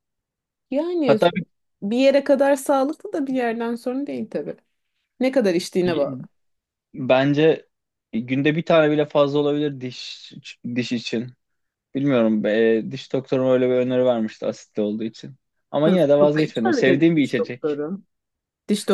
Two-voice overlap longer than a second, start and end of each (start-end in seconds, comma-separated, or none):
15.9-17.8